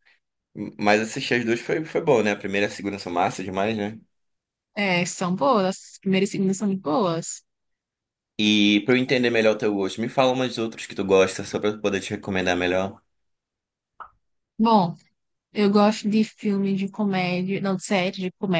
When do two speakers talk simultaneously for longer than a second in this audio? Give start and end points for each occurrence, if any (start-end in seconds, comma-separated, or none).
none